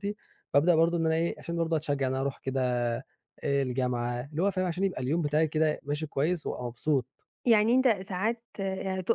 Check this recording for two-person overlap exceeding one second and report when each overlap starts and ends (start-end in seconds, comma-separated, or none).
none